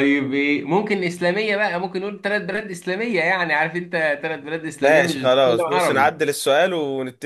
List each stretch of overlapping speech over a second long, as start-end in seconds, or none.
4.8-6.2